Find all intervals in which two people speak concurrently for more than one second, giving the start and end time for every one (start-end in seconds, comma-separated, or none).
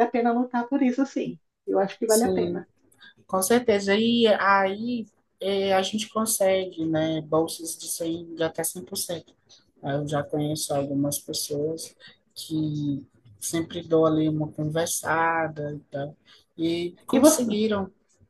none